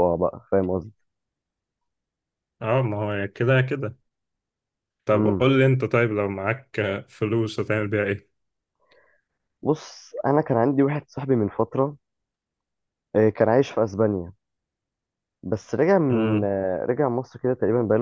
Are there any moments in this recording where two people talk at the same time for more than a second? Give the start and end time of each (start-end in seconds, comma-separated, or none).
none